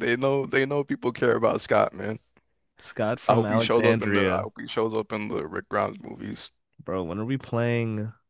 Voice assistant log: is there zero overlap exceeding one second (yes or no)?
no